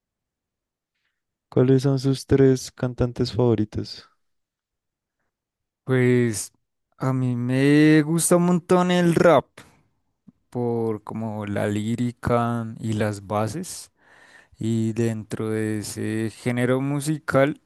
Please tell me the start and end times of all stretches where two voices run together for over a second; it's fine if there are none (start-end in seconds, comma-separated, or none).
none